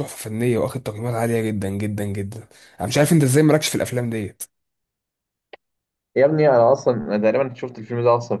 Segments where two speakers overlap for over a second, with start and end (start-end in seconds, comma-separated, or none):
none